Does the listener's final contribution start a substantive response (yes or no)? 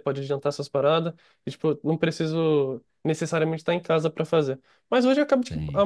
no